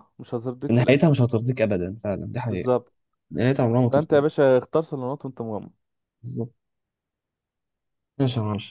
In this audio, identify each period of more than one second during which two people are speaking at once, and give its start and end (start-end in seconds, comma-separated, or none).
none